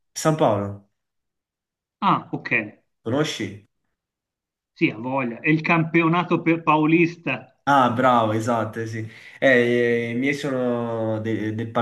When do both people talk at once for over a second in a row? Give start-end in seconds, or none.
none